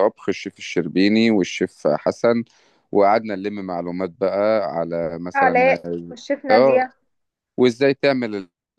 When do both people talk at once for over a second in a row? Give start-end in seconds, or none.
none